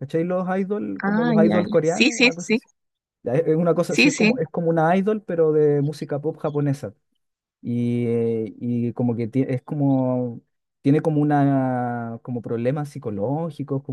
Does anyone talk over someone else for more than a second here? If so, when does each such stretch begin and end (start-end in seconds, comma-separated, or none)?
1.0-2.6